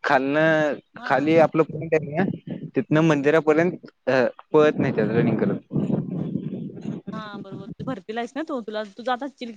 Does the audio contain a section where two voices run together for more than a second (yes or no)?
no